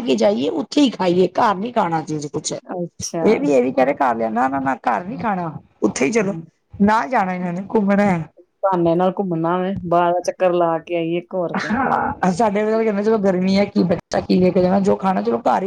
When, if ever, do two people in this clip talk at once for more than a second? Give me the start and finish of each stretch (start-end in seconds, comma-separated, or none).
none